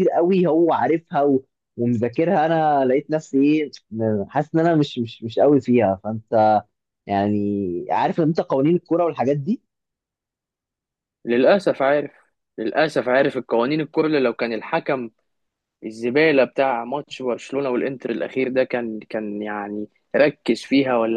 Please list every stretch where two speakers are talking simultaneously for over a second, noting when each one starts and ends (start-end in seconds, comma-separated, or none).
none